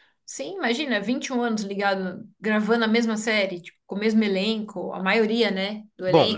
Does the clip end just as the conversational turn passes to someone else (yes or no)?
yes